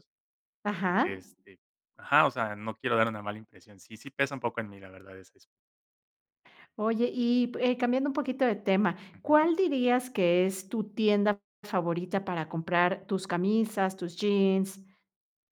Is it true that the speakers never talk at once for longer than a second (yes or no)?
yes